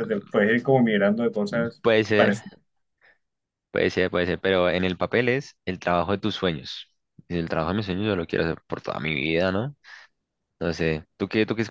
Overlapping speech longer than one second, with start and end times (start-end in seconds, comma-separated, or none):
none